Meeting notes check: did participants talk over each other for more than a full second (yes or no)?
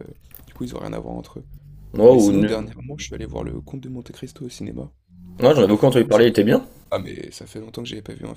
no